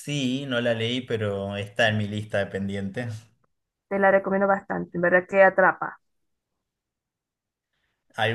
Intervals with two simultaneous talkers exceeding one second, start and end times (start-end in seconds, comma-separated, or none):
none